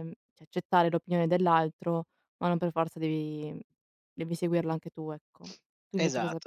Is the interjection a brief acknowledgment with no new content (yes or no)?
no